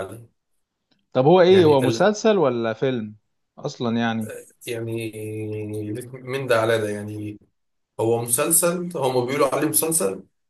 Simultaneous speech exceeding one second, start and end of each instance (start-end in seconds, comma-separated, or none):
none